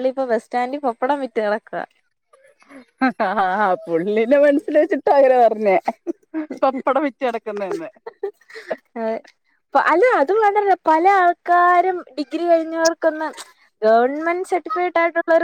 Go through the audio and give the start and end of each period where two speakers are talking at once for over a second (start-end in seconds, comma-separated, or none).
none